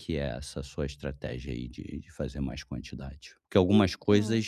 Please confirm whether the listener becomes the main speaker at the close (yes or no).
no